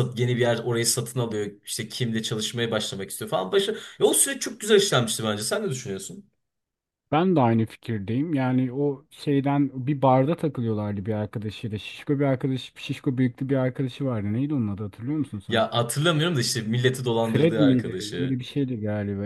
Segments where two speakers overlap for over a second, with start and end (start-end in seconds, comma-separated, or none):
17.2-18.4